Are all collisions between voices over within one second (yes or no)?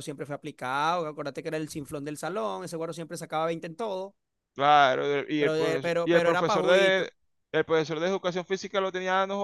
no